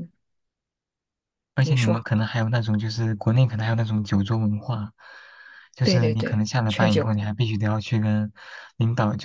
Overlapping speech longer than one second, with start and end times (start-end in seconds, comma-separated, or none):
5.8-7.1